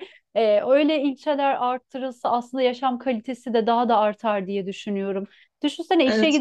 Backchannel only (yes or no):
yes